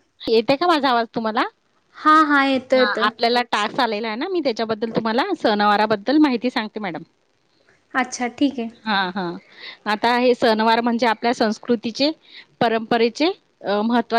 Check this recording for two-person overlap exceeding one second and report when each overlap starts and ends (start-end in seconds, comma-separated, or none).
none